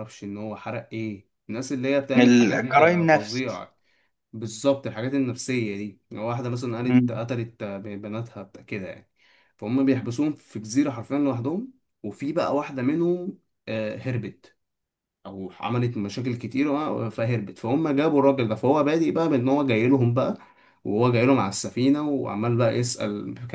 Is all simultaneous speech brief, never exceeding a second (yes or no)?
no